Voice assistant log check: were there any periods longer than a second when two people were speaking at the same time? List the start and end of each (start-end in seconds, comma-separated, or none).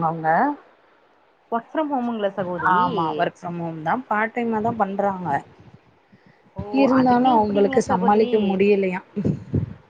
7.0-8.3